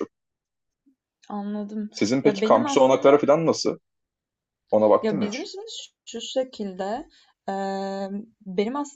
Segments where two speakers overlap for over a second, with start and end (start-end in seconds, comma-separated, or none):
1.9-3.3